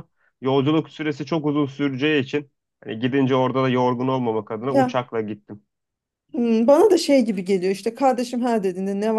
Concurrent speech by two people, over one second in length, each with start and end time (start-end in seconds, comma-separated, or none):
none